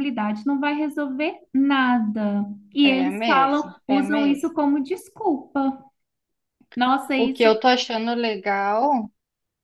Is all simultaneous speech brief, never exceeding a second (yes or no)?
no